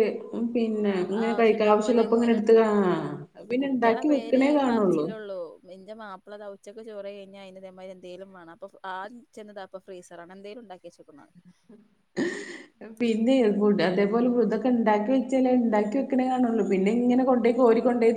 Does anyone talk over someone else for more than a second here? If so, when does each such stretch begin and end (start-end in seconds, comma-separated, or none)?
0.9-2.4, 3.6-5.1